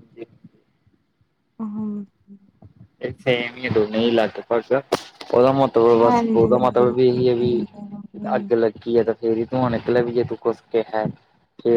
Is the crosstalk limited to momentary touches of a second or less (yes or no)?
no